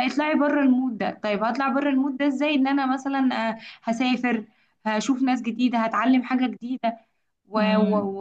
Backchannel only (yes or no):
yes